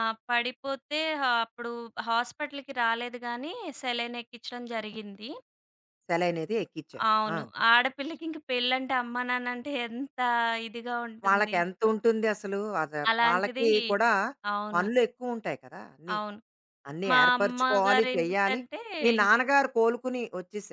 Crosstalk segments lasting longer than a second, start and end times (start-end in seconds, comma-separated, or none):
17.1-18.6